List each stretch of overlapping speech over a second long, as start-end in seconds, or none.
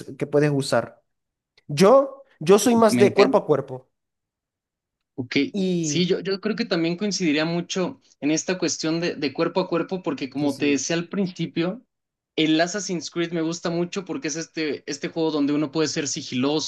none